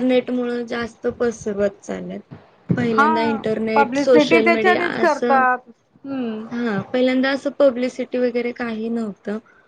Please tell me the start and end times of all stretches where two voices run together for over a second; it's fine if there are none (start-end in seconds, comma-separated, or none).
3.7-5.4